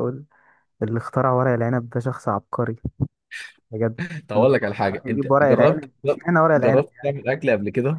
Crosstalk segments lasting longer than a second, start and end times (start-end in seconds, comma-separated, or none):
4.3-5.9